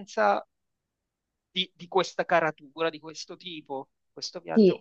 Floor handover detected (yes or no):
yes